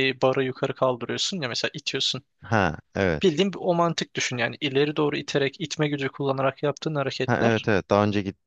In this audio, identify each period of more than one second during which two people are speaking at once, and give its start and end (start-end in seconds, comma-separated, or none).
none